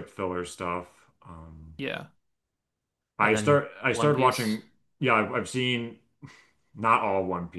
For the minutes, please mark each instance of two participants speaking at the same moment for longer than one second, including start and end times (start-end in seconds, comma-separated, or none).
3.2-4.6